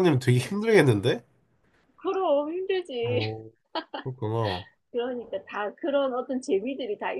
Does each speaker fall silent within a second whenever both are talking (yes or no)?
yes